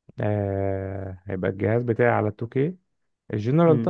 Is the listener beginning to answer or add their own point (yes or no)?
no